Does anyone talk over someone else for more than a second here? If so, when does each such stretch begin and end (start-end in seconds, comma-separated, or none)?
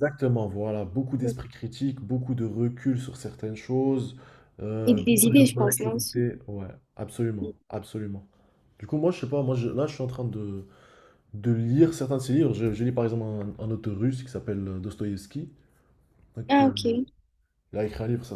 4.8-6.2